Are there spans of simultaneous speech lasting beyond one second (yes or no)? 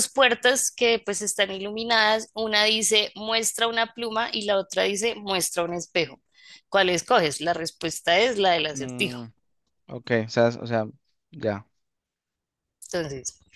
no